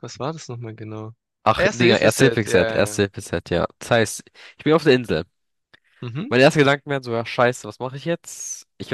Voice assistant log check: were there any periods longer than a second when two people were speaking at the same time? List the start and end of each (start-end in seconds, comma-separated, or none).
1.5-3.0